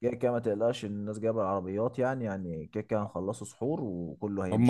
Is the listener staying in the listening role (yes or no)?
no